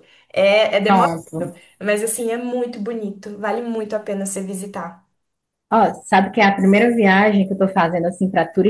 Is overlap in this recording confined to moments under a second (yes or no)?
yes